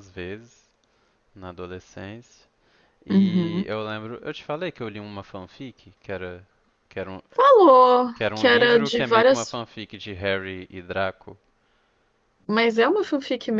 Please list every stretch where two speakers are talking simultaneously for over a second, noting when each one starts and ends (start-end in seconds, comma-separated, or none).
8.1-9.6